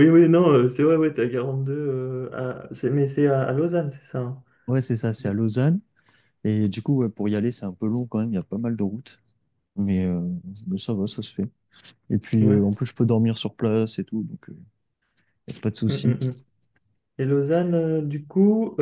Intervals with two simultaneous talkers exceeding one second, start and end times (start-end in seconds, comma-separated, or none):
none